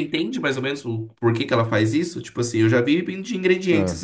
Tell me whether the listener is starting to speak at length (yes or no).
no